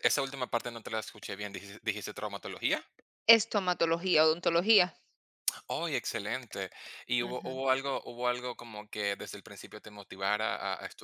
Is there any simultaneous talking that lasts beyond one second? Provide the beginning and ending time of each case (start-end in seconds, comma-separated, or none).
none